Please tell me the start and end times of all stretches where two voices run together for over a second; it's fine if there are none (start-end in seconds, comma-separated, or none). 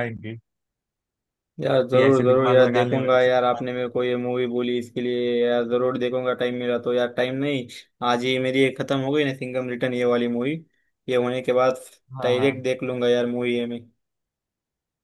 1.9-3.6